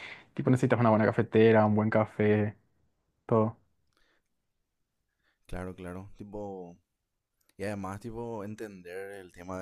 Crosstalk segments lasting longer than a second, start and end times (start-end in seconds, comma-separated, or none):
none